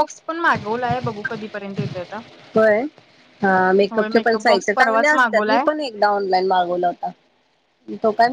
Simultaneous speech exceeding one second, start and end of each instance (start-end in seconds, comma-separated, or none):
3.9-5.6